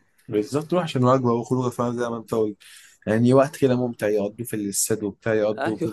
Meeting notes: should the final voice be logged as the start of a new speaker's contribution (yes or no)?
yes